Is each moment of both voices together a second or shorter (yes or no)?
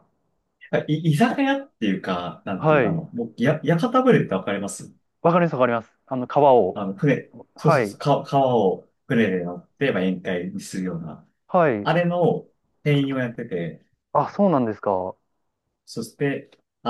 yes